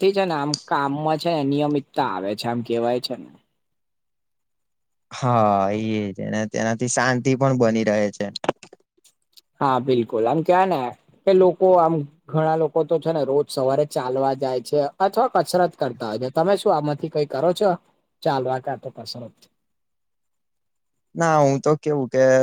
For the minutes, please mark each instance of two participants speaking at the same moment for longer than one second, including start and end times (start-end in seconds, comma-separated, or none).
none